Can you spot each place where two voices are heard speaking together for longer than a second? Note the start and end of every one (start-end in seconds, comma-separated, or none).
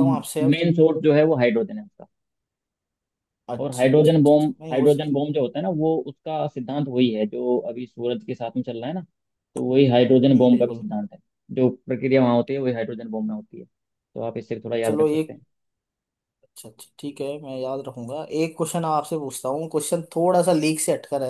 3.6-5.1